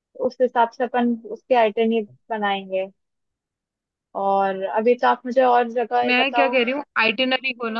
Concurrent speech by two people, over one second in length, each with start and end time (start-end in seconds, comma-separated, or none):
none